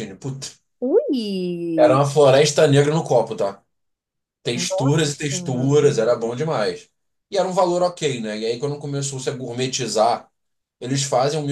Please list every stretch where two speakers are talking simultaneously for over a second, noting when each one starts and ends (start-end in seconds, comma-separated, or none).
4.5-5.9